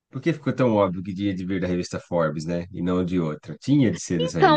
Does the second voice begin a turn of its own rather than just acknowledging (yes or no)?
yes